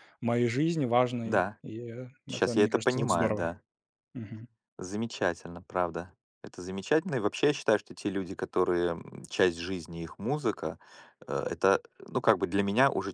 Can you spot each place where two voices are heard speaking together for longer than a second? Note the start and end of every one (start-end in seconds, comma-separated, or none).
2.2-3.5